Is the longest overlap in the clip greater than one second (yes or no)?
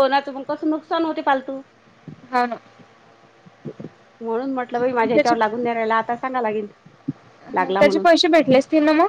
no